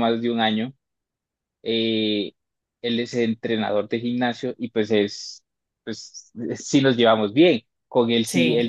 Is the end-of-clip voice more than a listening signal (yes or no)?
no